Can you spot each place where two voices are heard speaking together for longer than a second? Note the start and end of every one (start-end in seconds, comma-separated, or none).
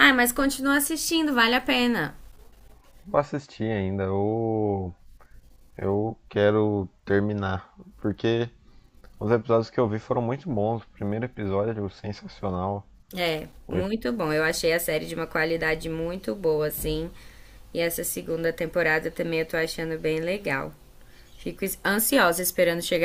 none